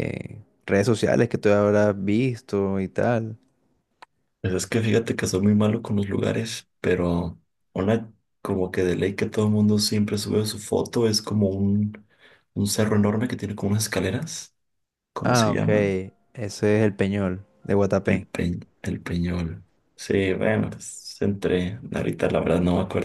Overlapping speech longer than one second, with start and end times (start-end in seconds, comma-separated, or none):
none